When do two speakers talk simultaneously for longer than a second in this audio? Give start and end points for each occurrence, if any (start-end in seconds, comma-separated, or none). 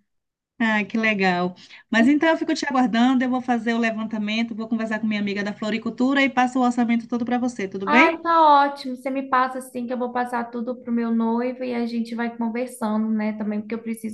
none